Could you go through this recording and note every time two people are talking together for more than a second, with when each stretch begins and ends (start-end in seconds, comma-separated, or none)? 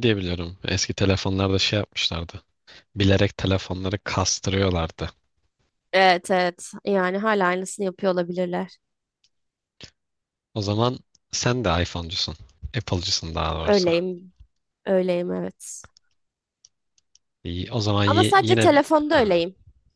18.1-19.4